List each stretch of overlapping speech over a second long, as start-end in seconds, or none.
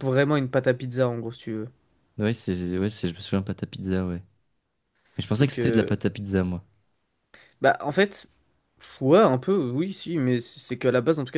none